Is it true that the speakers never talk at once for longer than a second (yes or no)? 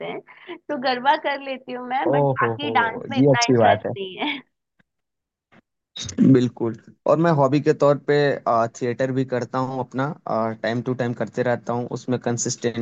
no